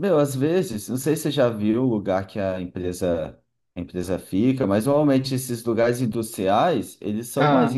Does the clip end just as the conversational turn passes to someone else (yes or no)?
no